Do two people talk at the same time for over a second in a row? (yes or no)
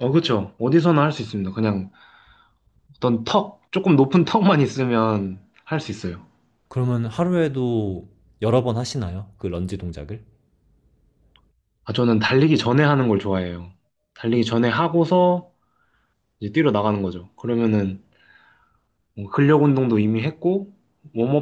no